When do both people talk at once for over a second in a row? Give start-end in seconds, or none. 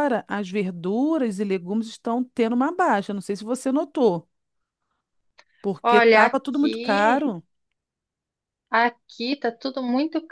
5.8-7.3